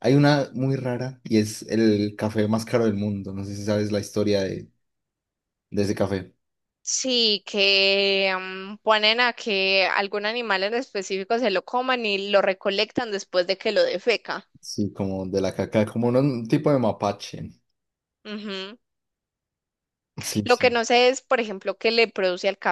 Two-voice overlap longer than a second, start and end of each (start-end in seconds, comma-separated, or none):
none